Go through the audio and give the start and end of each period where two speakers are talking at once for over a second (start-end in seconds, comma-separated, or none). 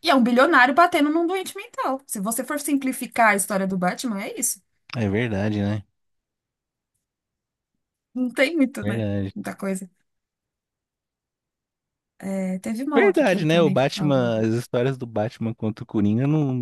12.9-14.4